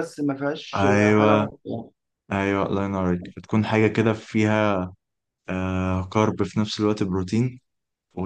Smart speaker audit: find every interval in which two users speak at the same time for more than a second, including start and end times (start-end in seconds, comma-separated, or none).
none